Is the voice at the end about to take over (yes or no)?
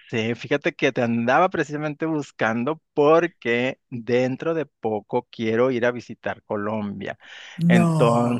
no